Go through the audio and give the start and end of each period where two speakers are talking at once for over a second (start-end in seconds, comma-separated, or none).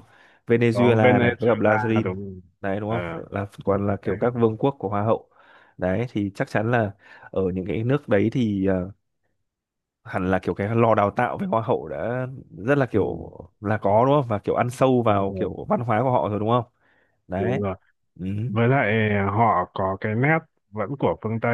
0.7-2.1